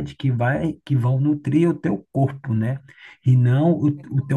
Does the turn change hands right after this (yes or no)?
no